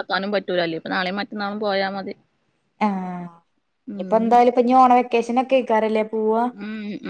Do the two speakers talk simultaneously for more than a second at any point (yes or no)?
no